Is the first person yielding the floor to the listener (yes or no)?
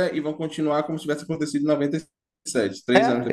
yes